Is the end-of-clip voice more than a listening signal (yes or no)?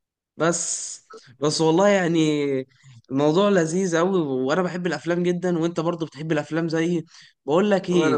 no